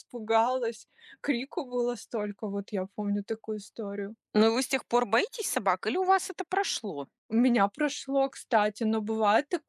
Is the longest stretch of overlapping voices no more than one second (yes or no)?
yes